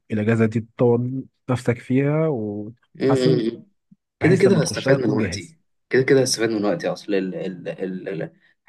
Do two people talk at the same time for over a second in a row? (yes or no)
yes